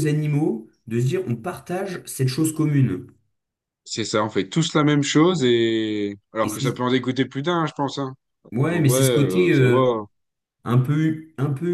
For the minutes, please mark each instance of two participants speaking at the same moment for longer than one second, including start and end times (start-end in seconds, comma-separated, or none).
8.6-9.9